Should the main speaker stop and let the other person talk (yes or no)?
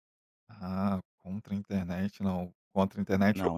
no